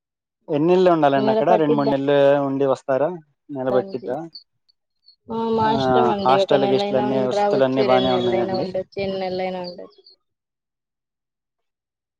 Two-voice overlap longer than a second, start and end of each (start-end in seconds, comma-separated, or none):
6.7-8.6